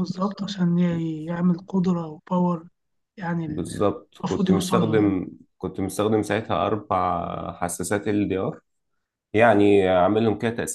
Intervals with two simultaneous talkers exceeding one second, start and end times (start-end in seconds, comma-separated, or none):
3.4-5.2